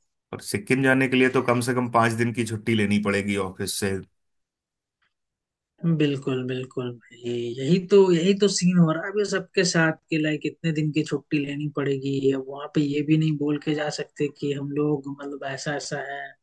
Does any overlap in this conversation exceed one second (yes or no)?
no